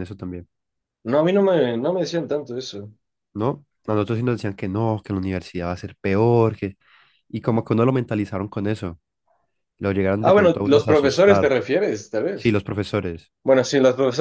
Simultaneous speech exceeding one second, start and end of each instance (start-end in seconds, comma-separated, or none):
10.2-11.6